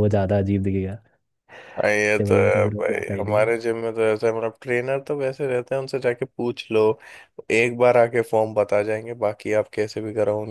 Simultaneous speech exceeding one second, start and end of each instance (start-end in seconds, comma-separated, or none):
2.0-3.5